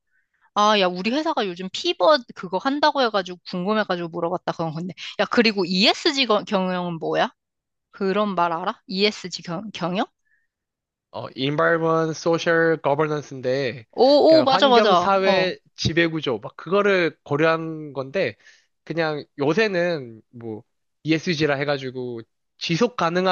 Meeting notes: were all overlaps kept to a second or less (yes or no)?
no